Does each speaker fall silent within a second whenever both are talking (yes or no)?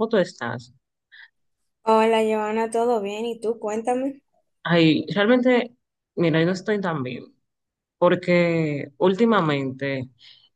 yes